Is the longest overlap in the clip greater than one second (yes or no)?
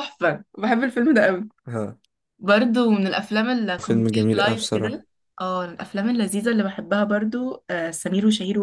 yes